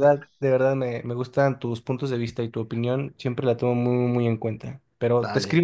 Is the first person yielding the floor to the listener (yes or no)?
no